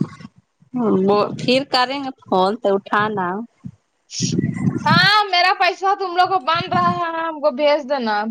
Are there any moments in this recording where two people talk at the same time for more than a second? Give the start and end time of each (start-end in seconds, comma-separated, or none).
none